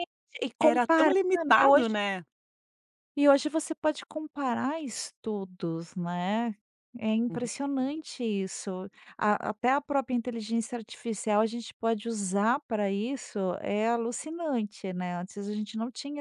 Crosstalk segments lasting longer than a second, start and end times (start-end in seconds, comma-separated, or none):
0.6-2.0